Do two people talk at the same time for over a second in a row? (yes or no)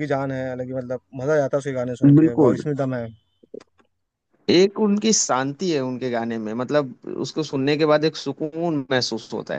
no